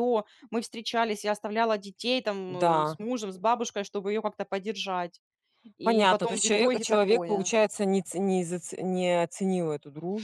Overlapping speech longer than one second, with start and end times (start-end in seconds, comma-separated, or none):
5.8-7.5